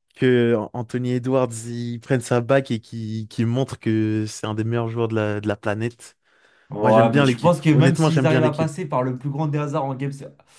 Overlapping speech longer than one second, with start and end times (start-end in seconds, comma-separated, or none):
6.8-8.7